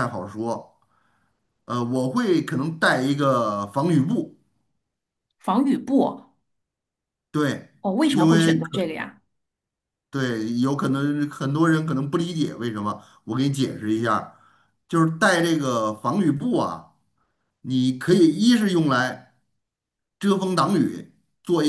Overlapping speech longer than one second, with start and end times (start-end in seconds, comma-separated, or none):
none